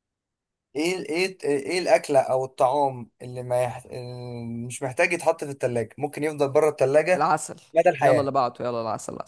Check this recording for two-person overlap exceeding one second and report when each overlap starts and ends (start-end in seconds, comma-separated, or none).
none